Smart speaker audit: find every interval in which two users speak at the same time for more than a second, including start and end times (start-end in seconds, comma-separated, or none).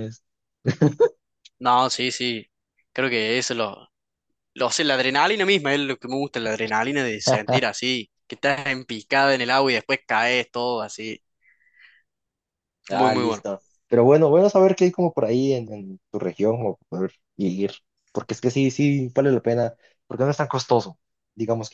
none